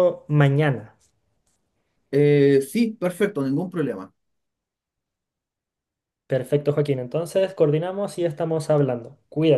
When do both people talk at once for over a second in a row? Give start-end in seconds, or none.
none